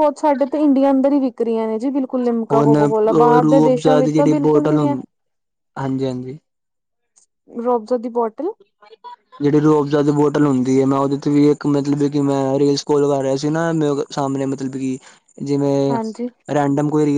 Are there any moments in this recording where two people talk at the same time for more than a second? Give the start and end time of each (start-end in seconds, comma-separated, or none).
3.4-5.0